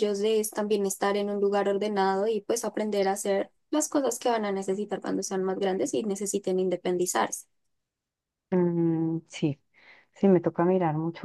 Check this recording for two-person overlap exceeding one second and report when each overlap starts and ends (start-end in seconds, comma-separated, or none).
none